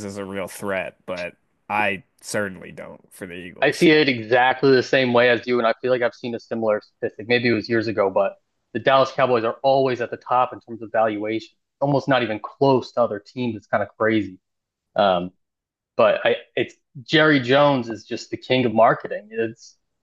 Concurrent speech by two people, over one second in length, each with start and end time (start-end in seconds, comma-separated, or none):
none